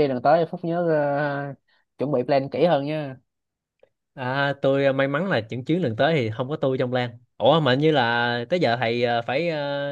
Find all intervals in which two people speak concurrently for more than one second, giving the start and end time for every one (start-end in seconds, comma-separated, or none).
none